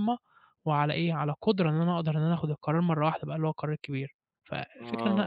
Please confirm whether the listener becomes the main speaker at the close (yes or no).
yes